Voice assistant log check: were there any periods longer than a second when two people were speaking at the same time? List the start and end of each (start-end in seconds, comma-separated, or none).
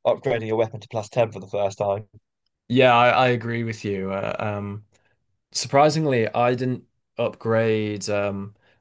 none